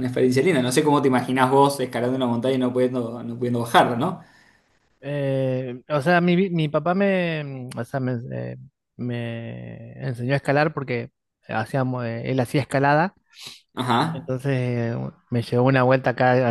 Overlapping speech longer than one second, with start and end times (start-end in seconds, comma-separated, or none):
none